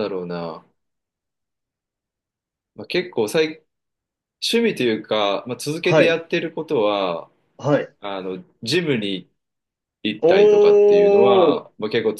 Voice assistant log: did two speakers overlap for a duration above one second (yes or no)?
yes